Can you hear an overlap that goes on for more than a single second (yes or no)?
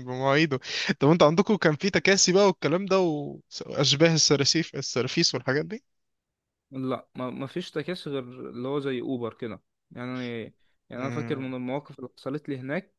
no